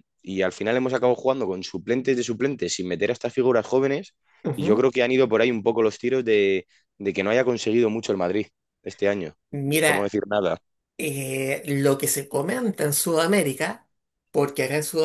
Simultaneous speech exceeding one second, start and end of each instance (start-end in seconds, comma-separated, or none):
none